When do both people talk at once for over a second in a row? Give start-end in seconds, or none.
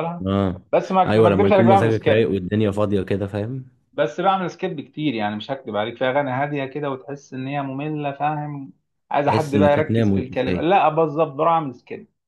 1.1-2.4, 9.2-10.7